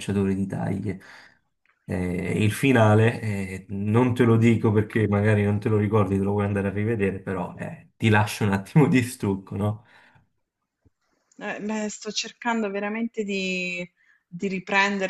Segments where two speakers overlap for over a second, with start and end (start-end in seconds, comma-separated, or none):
none